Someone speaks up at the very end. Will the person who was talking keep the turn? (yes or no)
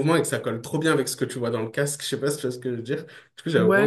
no